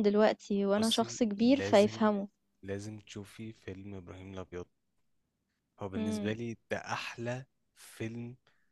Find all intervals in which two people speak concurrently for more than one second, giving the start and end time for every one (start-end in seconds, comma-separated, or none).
0.8-2.1